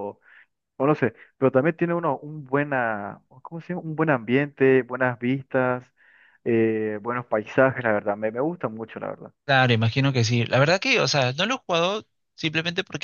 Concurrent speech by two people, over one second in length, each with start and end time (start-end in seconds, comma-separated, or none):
none